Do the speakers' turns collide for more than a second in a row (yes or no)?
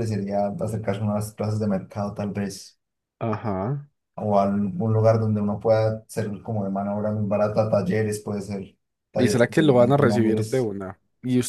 yes